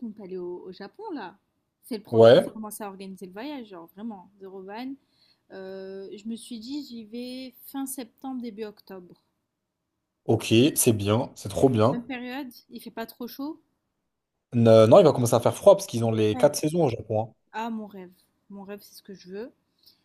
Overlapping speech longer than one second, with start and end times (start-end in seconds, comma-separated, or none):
none